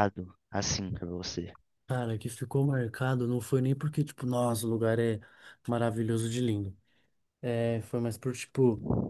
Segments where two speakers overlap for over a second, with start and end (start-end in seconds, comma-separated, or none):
none